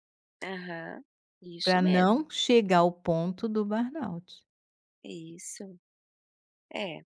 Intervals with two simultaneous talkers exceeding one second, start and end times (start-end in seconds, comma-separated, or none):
none